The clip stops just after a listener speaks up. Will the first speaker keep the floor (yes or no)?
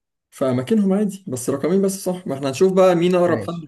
no